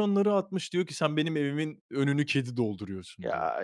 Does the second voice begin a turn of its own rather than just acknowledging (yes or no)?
no